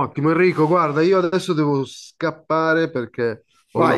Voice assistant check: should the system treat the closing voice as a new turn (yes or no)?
yes